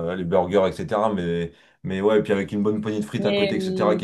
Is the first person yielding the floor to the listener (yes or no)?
no